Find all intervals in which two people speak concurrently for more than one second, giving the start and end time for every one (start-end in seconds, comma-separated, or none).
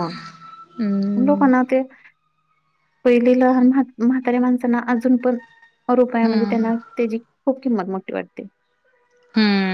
none